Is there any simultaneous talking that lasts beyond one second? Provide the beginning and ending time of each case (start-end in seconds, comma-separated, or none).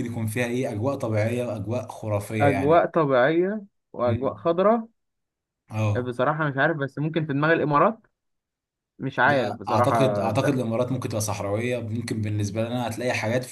9.2-10.5